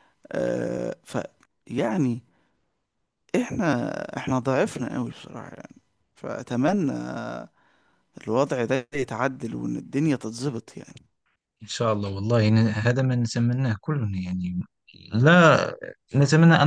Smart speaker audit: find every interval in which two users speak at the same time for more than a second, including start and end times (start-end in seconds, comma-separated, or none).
none